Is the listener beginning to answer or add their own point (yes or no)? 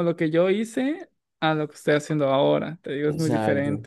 yes